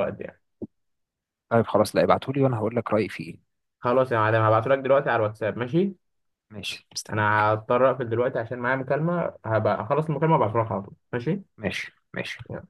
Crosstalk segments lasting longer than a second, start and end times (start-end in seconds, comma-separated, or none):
none